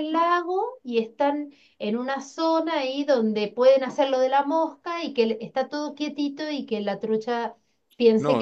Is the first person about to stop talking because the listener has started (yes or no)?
yes